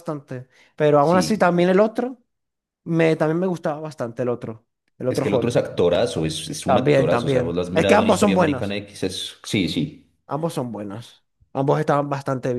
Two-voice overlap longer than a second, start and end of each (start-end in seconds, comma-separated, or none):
6.7-8.8